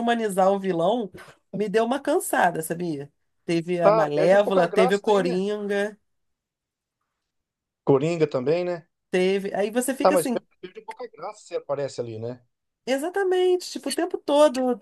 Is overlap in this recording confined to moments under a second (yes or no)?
no